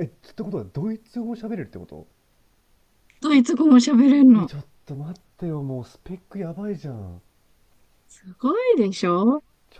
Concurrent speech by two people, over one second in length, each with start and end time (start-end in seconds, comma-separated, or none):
none